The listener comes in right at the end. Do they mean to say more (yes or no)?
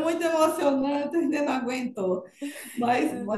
no